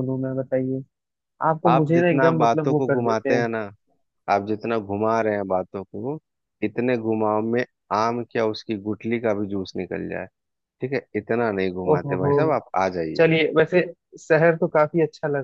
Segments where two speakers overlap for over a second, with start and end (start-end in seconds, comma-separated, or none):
1.7-3.4